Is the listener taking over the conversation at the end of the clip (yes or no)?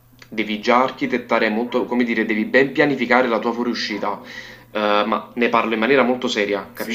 yes